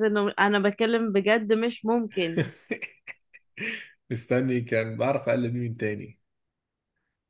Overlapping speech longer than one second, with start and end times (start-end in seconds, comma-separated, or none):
none